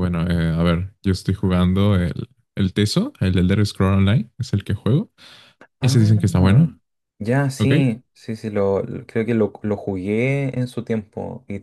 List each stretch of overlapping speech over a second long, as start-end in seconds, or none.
none